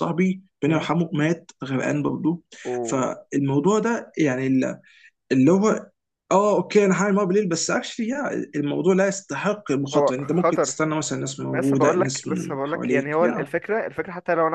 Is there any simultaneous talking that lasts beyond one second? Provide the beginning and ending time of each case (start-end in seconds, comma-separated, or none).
11.5-13.5